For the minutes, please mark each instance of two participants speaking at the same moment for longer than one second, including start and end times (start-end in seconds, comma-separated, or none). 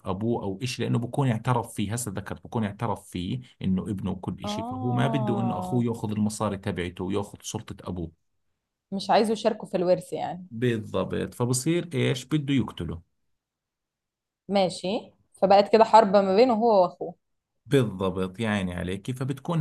4.4-5.9